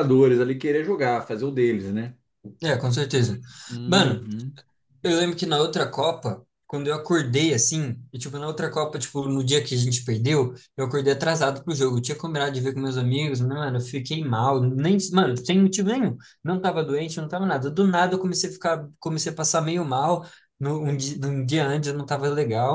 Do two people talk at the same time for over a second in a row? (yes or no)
no